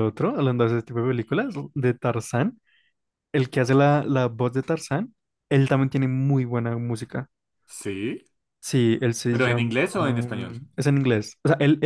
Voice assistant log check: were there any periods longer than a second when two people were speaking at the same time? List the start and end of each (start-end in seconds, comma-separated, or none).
9.3-10.6